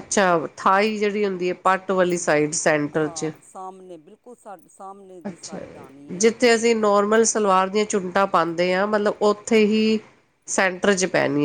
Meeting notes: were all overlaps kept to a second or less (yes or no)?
no